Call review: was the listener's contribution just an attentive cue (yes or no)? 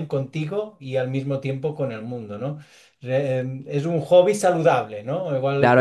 no